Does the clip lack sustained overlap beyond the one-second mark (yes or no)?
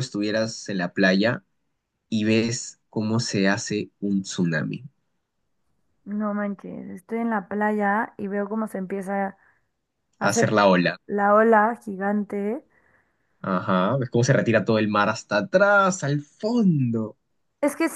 yes